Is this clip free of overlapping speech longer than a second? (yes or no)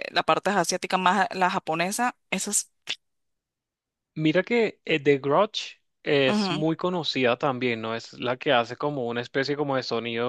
yes